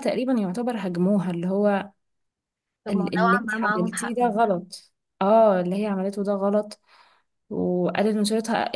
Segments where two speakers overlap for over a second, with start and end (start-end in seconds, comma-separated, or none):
2.9-4.4